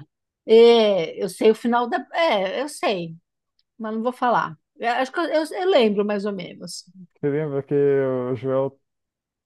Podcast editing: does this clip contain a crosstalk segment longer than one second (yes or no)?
no